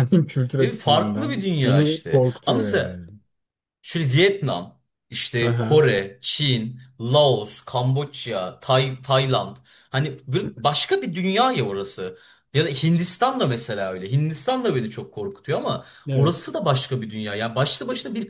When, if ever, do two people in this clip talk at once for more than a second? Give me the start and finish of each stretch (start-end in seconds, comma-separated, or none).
0.6-3.0